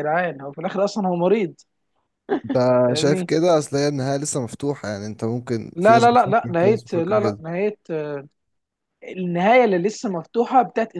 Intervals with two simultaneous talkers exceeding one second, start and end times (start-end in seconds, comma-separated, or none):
5.7-7.4